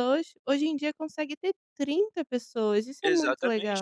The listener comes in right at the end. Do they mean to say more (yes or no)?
yes